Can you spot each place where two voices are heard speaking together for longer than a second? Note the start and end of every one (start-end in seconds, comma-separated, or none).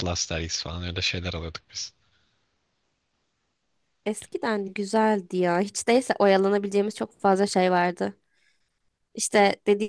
none